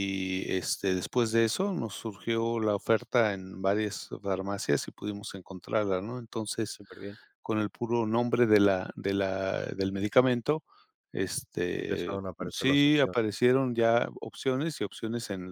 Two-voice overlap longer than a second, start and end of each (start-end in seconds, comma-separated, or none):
11.7-13.2